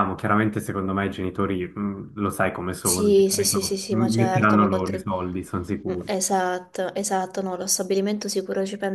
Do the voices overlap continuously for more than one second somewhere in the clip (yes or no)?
yes